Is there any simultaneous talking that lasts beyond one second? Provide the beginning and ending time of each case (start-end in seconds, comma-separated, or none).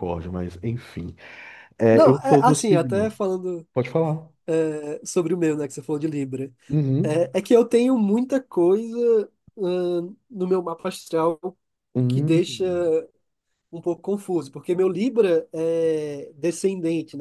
1.9-3.1